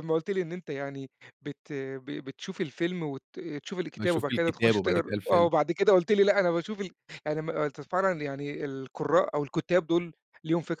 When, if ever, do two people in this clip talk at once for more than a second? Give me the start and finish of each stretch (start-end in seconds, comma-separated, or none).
4.0-5.5